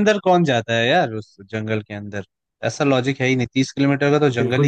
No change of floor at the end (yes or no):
no